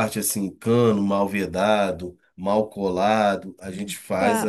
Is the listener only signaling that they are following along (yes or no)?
no